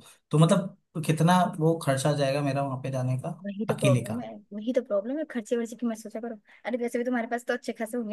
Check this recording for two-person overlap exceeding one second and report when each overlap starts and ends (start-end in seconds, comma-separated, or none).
none